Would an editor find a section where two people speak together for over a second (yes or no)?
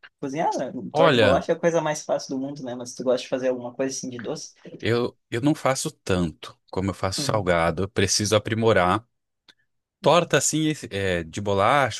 no